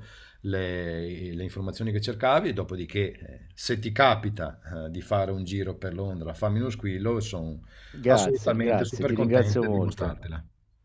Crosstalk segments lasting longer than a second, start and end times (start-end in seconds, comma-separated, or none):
8.1-10.2